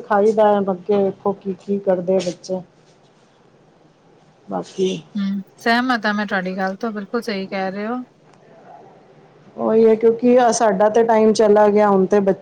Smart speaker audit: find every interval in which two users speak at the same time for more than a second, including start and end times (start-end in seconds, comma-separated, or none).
none